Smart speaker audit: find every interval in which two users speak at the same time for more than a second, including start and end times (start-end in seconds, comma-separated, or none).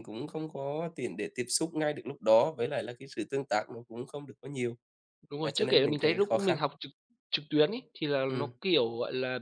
5.4-6.6